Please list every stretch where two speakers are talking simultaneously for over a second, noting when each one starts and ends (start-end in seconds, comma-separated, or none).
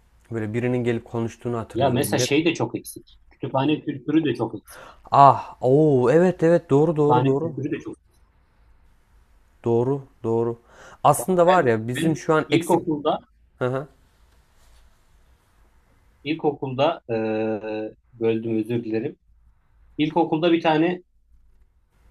11.2-12.8